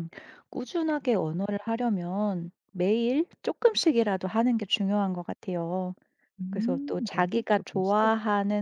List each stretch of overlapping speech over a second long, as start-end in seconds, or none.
6.5-8.0